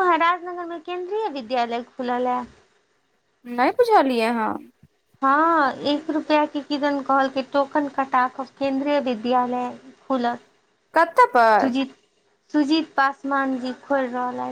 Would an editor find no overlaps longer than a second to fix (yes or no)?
yes